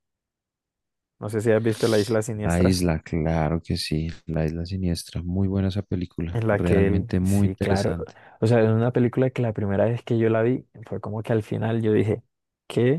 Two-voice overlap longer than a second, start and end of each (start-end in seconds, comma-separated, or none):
6.3-7.9